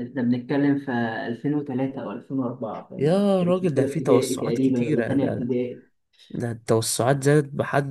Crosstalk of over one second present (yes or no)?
yes